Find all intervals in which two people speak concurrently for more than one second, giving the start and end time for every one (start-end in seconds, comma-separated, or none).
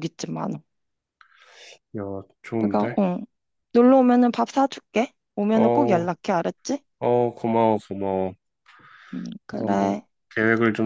none